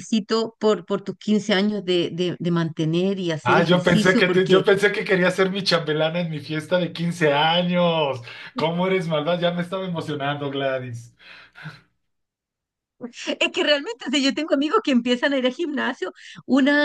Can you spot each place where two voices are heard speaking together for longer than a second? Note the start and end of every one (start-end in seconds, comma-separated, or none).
3.4-4.6